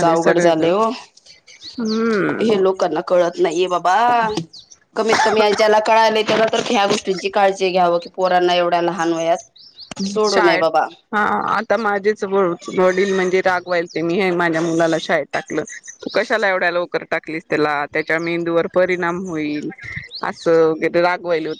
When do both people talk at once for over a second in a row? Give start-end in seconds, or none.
none